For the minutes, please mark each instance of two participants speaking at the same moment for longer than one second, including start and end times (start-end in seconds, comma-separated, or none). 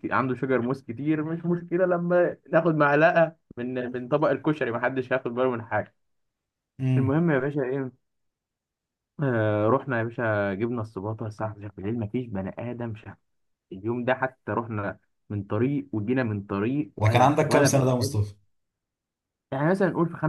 17.0-18.2